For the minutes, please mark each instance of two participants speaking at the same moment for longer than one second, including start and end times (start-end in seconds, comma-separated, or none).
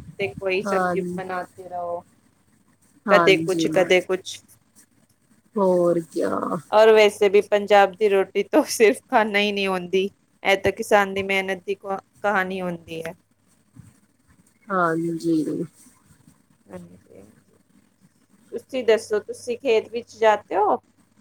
none